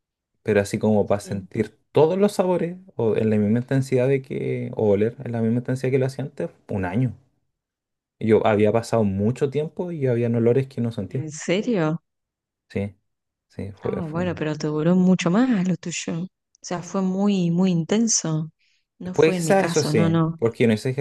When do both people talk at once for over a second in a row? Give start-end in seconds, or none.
19.1-20.4